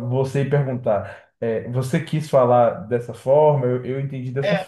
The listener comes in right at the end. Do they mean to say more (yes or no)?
no